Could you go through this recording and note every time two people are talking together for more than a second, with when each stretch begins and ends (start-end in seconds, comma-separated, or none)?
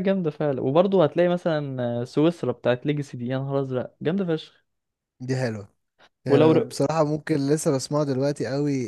none